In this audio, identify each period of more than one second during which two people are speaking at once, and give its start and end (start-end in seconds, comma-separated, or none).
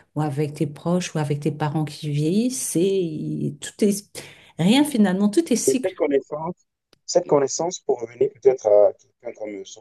none